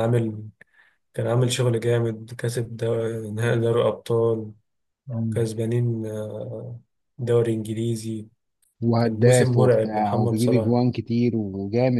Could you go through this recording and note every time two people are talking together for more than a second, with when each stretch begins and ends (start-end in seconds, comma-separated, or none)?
9.0-10.8